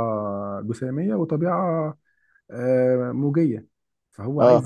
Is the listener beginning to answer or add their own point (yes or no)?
no